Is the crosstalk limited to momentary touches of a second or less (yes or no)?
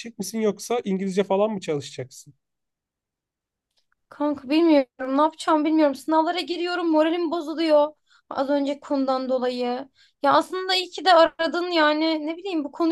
yes